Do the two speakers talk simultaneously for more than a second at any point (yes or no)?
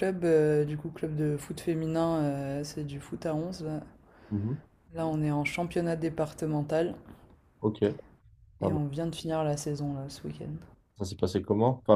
no